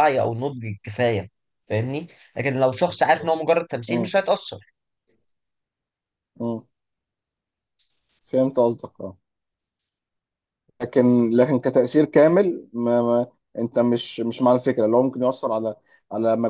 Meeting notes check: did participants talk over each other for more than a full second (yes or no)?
no